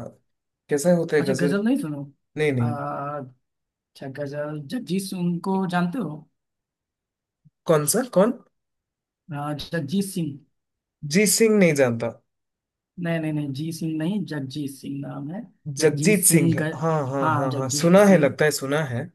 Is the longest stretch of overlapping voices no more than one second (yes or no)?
no